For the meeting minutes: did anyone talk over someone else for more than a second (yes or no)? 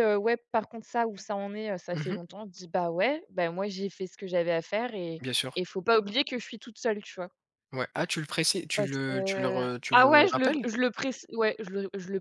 yes